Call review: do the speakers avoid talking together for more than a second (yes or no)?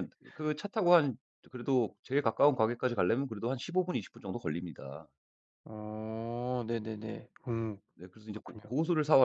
yes